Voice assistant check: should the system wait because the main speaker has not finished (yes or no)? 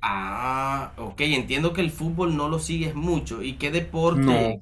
yes